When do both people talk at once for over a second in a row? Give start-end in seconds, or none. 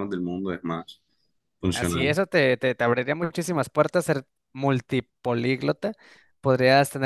none